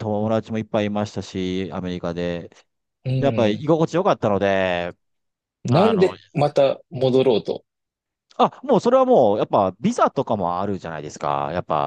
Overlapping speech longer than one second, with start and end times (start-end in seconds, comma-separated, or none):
none